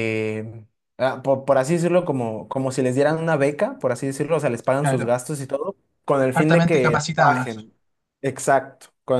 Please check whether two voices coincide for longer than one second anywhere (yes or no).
yes